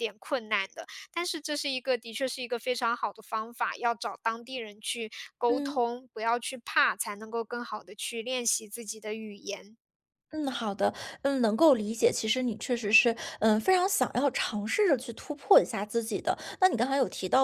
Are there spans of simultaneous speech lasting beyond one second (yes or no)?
no